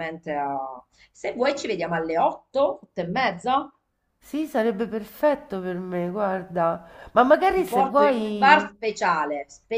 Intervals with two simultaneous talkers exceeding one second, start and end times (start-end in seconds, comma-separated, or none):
7.5-8.8